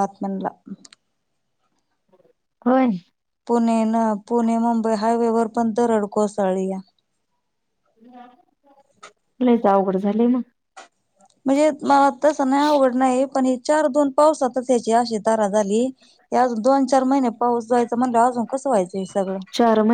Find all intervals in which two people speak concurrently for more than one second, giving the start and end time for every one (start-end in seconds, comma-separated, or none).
none